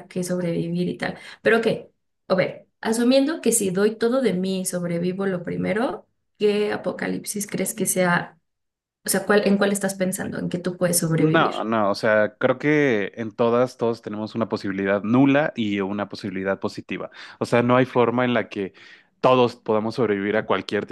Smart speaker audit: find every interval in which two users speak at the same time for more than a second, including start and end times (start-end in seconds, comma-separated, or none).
none